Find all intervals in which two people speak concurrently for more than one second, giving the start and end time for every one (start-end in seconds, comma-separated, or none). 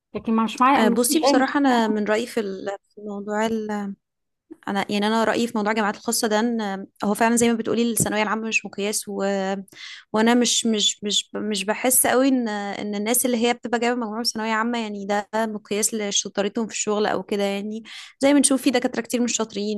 0.8-2.0